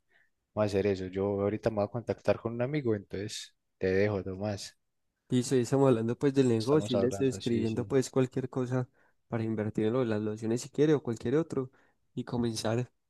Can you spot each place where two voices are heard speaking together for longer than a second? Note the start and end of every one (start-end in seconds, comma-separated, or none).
6.6-7.9